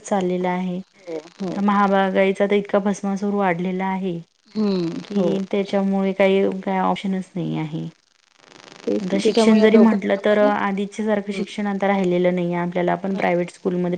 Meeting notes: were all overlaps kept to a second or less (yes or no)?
no